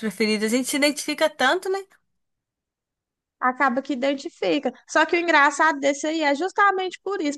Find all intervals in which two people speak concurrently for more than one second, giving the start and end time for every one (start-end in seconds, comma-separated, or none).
none